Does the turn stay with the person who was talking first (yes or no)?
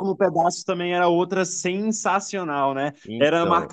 yes